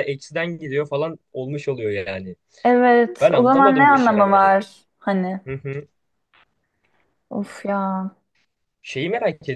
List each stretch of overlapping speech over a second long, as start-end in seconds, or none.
3.2-4.5